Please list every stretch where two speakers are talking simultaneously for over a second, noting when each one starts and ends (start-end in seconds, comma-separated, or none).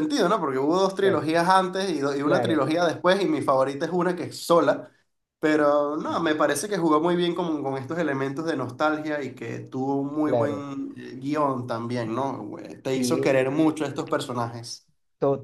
none